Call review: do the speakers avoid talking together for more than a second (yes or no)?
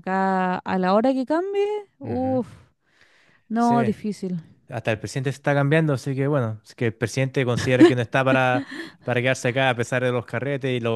yes